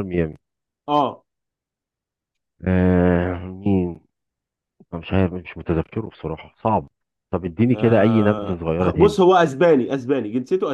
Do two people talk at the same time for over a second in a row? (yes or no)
yes